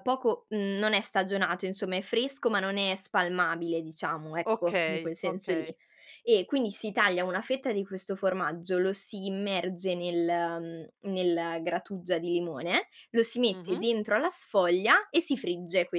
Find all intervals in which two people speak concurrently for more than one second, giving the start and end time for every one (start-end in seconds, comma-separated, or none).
4.5-5.7